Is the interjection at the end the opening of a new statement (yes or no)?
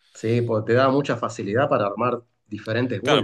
yes